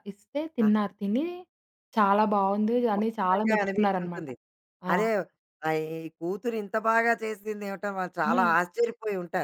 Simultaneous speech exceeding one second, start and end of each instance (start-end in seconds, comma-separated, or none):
3.0-4.3